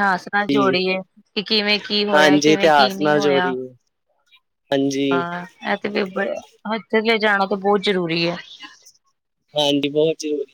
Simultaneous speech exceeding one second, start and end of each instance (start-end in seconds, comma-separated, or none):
2.1-3.5